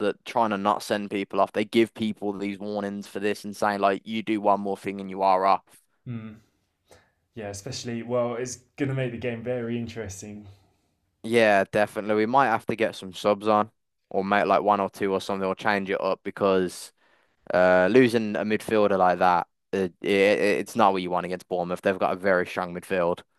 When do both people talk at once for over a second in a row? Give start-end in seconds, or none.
none